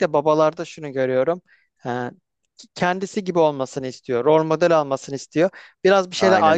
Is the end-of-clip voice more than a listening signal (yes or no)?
no